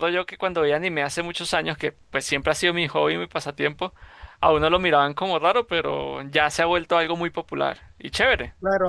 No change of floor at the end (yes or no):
no